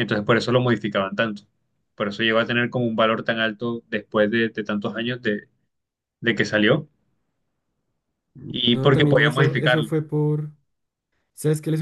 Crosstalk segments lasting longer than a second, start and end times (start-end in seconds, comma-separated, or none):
8.7-9.9